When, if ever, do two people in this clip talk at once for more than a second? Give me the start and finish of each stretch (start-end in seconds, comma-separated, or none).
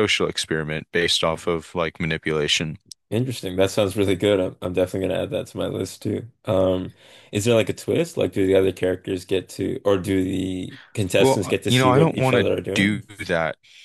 11.2-13.0